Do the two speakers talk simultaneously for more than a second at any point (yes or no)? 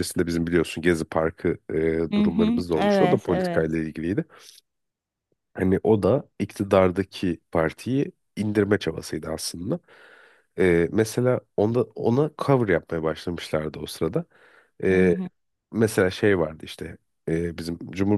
yes